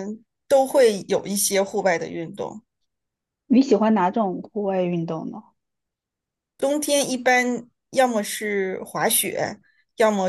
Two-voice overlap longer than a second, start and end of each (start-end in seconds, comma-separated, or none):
none